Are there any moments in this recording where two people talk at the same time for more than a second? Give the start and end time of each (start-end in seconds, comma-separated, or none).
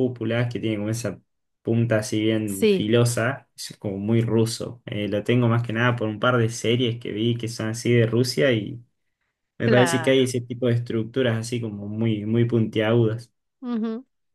none